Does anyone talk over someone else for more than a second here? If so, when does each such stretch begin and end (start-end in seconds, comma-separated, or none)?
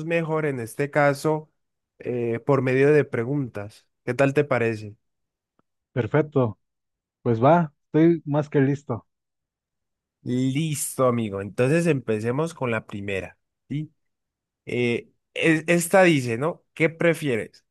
none